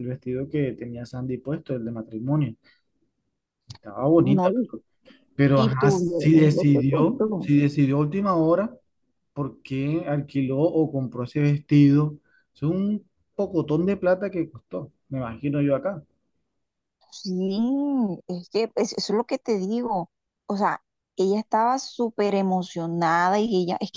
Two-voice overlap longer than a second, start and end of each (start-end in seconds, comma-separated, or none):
5.6-7.5